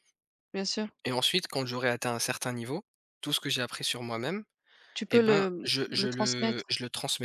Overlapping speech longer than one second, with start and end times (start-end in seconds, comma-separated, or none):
5.1-6.7